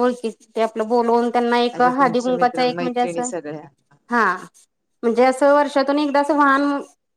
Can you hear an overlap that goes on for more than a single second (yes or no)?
yes